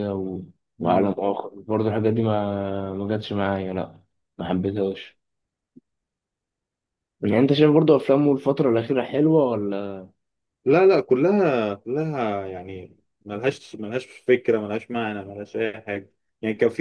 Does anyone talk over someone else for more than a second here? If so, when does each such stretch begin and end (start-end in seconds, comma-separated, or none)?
none